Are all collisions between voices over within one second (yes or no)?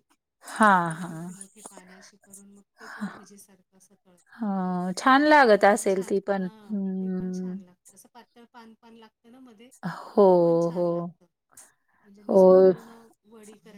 no